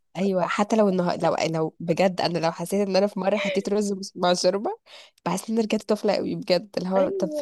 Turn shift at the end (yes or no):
no